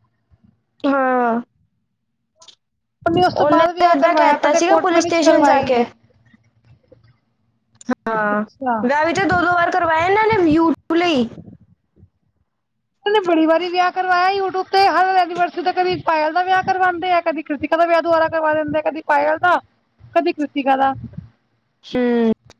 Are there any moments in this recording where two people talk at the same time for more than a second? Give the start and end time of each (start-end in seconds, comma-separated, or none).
3.4-5.8